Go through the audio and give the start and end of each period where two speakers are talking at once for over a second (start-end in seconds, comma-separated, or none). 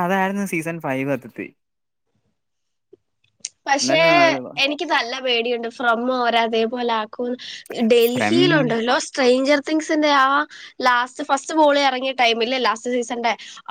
none